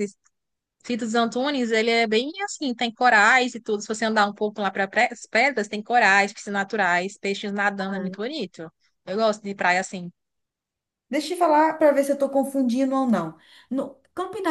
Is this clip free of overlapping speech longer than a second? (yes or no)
yes